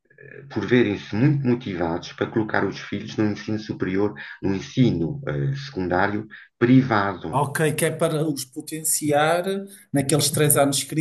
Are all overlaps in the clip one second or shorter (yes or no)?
yes